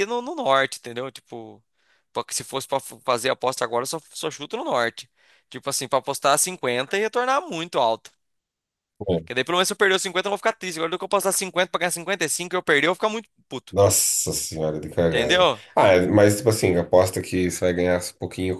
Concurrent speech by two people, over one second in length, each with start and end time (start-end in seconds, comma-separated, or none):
none